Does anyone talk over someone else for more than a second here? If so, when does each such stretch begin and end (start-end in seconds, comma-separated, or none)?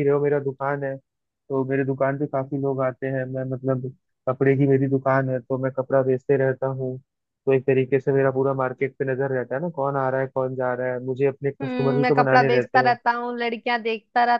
11.6-12.9